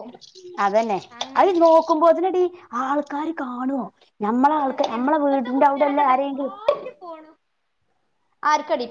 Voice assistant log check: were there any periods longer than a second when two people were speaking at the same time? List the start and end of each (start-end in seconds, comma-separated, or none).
4.7-6.5